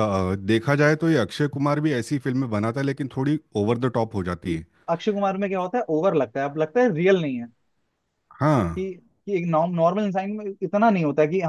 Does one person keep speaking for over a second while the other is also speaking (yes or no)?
no